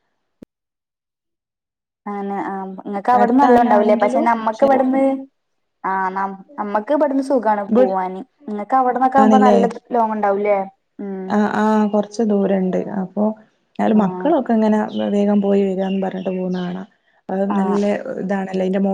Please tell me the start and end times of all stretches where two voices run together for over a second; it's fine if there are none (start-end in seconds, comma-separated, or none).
3.2-4.8